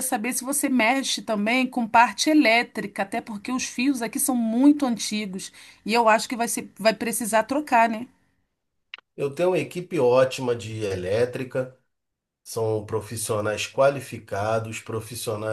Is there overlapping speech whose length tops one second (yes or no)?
no